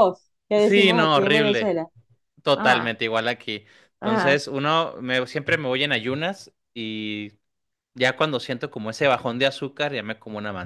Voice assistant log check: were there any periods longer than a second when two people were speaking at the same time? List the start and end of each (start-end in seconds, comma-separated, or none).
0.5-1.8